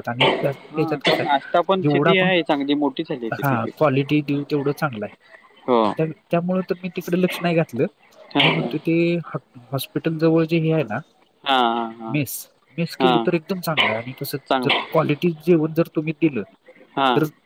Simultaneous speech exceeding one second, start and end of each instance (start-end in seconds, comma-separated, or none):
0.5-2.3